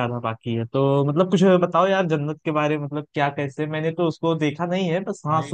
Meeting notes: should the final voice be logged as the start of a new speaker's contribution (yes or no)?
no